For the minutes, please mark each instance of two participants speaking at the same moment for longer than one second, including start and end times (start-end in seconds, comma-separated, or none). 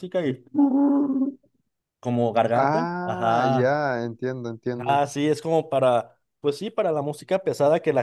2.5-3.8